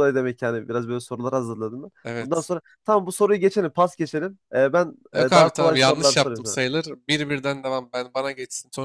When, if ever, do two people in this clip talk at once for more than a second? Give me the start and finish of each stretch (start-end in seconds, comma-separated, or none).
5.1-6.6